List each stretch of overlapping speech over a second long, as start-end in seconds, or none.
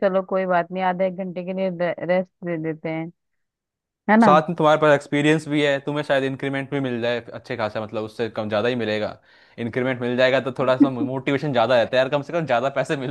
none